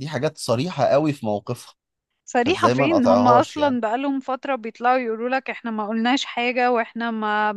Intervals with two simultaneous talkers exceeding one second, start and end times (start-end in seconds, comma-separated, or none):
2.4-3.8